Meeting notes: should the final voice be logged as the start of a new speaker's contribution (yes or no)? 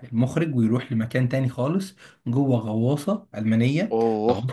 no